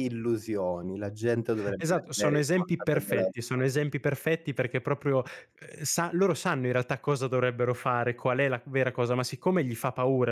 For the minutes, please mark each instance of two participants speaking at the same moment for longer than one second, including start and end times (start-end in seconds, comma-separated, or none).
1.8-3.6